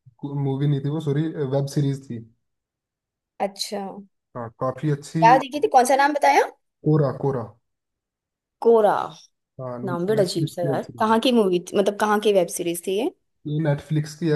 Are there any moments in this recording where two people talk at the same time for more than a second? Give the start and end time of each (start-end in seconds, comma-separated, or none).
9.8-11.2